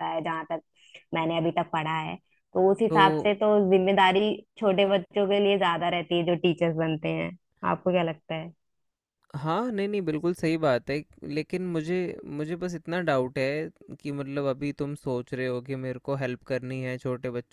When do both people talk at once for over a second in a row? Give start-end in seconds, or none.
none